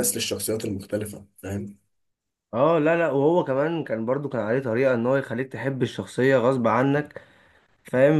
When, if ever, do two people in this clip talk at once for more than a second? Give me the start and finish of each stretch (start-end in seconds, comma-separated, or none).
none